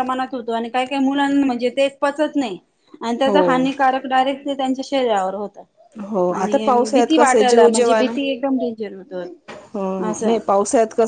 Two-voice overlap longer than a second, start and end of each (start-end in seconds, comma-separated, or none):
6.4-7.7